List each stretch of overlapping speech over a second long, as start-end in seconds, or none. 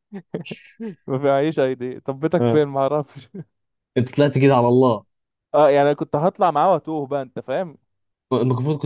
none